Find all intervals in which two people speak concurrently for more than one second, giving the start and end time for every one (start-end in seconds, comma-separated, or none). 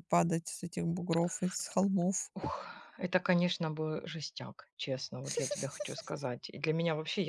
none